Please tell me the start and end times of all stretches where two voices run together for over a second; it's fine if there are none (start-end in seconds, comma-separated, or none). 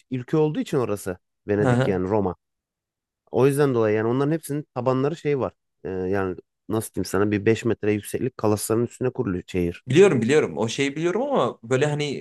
none